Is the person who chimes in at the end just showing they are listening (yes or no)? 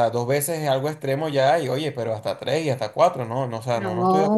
no